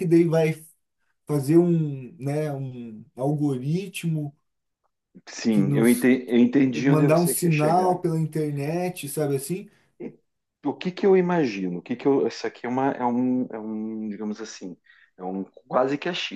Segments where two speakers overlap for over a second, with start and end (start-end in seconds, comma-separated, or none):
6.7-8.0